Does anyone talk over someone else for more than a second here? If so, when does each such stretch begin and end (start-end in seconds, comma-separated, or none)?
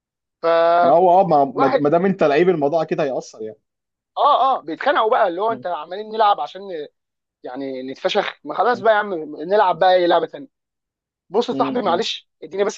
none